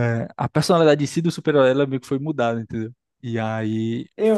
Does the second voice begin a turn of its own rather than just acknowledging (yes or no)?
yes